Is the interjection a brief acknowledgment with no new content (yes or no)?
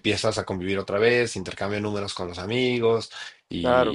yes